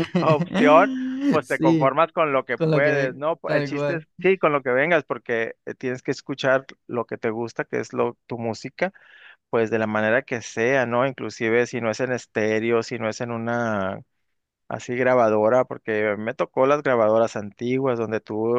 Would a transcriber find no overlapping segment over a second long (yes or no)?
no